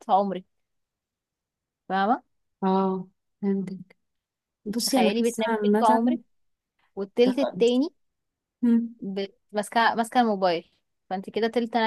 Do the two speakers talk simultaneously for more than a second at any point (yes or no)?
yes